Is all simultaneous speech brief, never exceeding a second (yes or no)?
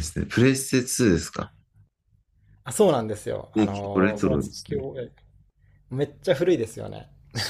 no